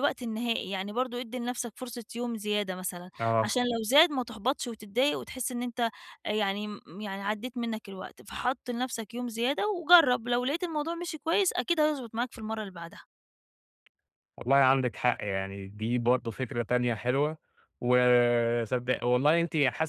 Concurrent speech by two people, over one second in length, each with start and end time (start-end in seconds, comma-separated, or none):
none